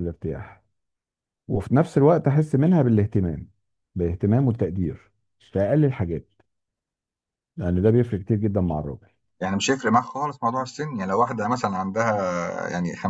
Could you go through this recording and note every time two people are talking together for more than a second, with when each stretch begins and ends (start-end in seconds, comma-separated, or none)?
none